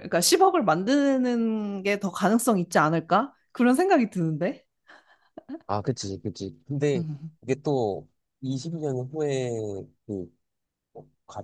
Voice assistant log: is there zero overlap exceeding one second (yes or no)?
yes